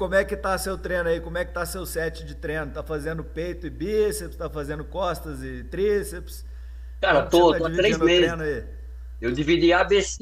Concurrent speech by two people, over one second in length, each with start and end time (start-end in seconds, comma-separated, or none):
7.1-8.4